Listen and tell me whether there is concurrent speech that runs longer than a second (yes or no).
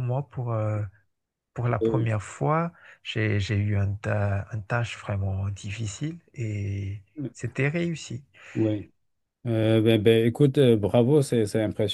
no